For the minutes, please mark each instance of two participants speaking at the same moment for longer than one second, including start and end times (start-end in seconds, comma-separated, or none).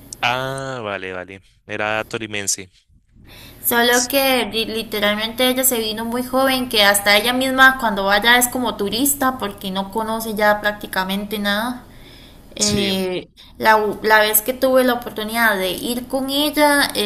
none